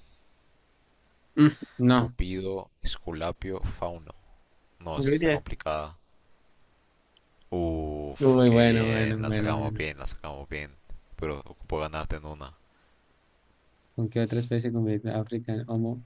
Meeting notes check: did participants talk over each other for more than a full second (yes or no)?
yes